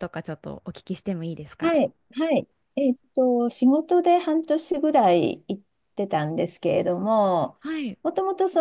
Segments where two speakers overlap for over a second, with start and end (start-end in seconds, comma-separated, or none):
none